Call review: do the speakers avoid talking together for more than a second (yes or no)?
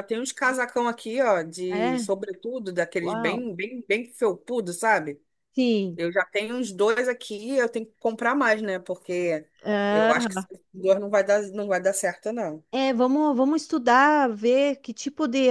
yes